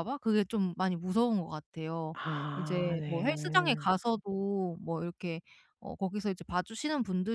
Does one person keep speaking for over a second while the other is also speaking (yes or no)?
yes